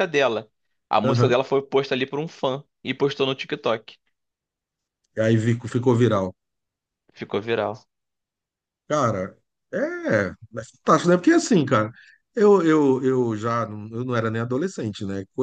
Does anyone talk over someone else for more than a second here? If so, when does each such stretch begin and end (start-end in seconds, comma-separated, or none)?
none